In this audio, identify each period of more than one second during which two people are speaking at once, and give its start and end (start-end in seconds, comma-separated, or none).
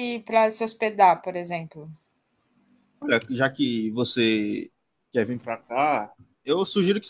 none